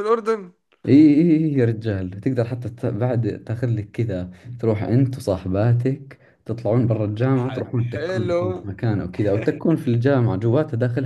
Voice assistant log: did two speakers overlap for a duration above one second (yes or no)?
yes